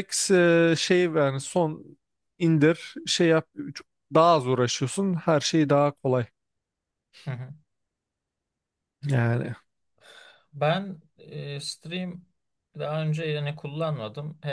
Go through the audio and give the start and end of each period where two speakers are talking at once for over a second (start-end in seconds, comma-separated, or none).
none